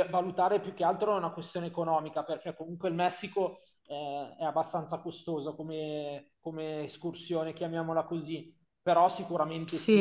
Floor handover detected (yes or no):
yes